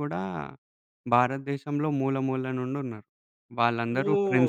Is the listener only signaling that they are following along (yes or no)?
no